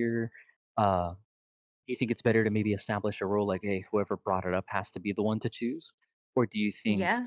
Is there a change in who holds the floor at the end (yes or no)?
no